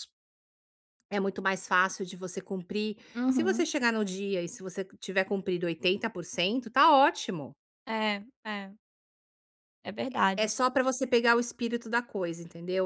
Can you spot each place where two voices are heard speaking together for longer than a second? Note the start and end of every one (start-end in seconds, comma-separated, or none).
none